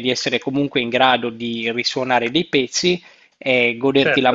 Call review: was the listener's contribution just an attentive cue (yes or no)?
yes